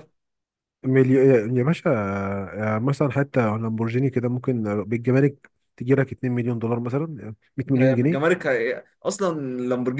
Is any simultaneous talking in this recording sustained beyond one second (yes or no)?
no